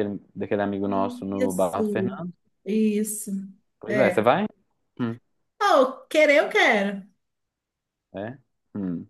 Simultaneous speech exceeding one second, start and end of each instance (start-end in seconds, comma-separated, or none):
0.8-2.2